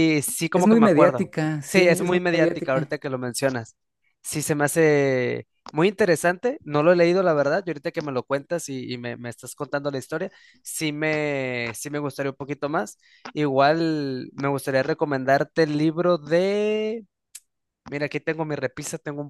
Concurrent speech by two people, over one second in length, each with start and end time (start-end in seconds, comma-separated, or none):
0.5-2.9